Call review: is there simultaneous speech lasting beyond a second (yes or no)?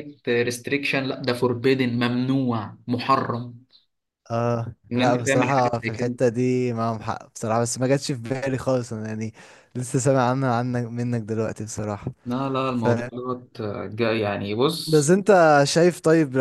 yes